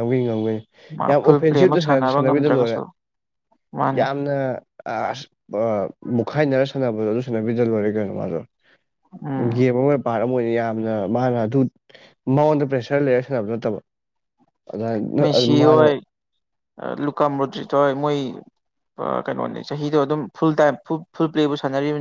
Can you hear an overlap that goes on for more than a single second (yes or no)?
yes